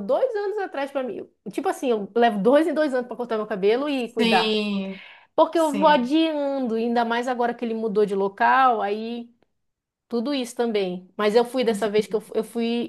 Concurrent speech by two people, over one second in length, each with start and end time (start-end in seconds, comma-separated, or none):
none